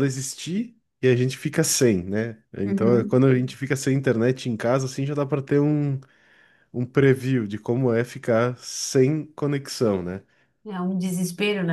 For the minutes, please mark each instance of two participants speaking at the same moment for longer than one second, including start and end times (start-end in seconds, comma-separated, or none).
none